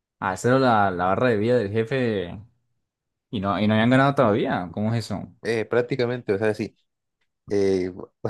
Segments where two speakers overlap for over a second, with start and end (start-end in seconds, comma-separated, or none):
none